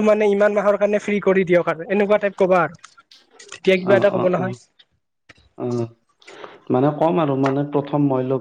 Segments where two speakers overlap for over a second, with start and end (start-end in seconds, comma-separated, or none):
none